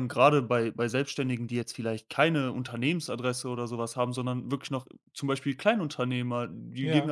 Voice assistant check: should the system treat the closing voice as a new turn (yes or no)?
no